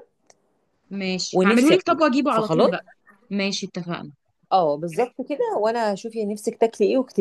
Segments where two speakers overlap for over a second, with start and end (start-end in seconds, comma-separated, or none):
1.3-2.7